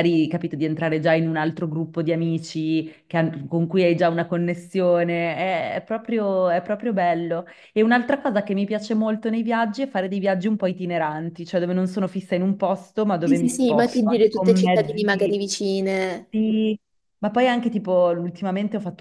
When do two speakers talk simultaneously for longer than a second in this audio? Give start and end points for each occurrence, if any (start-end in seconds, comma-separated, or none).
13.2-15.4